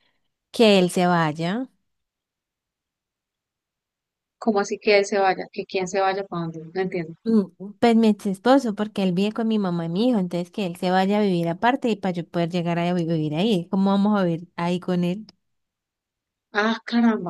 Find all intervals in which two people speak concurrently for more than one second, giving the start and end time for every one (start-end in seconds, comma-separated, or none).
none